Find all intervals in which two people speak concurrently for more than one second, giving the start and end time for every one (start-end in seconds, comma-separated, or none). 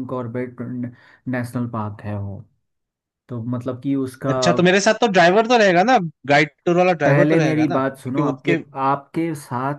7.0-8.6